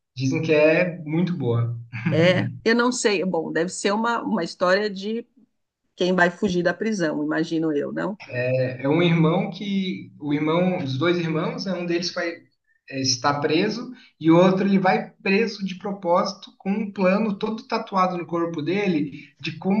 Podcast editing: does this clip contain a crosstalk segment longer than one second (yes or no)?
no